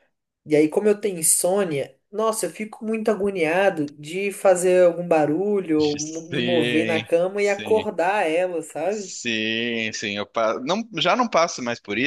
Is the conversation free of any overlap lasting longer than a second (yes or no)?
no